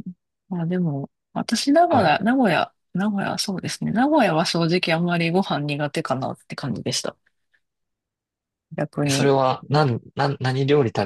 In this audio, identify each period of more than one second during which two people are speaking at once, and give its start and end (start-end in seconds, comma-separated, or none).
none